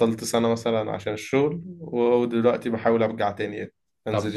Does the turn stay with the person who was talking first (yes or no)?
no